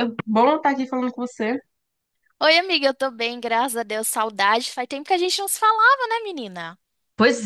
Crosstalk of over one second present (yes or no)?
no